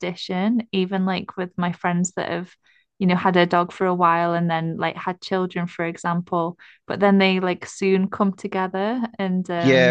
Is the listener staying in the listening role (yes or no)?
no